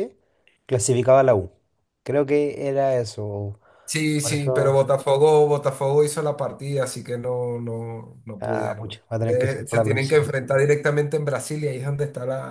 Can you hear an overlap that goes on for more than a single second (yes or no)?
yes